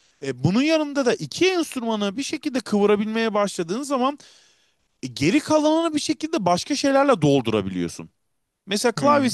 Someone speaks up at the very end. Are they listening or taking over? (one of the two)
listening